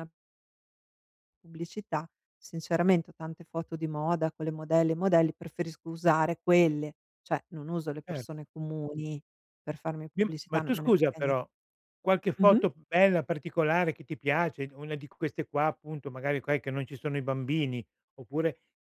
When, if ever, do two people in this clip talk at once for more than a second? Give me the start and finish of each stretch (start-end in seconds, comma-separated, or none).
10.1-11.3